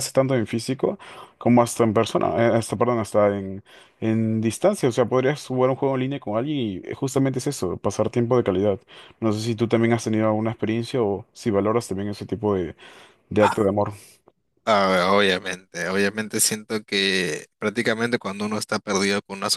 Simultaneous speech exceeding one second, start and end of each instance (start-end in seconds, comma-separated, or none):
none